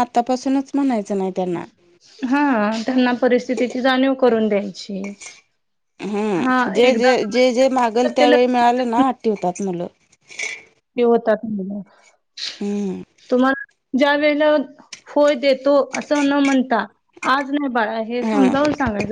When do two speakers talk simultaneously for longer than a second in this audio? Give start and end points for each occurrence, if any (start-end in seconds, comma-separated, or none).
6.4-9.0